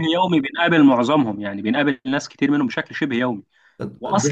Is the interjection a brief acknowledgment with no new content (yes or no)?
yes